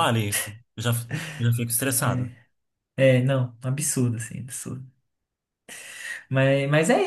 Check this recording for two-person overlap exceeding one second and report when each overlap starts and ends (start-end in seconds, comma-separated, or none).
none